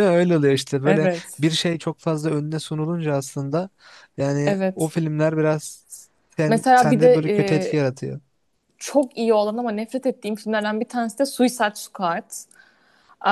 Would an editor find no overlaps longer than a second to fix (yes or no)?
no